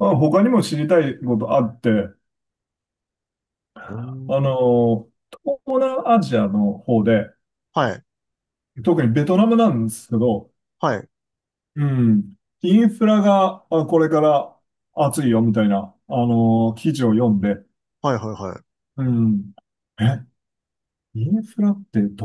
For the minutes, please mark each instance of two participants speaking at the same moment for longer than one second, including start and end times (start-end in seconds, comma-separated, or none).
none